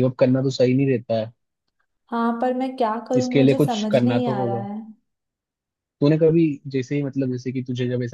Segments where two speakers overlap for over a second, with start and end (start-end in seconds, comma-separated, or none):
3.2-4.7